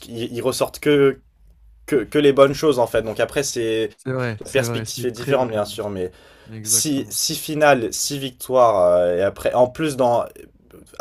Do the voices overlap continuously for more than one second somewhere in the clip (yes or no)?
yes